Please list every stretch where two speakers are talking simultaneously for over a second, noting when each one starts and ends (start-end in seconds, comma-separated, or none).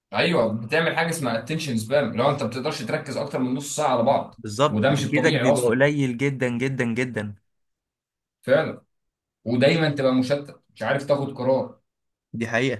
4.4-5.8